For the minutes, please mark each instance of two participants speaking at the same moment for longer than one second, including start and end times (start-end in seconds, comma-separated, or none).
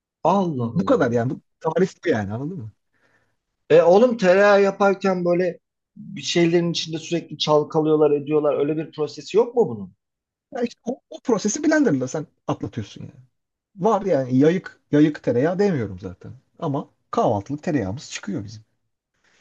none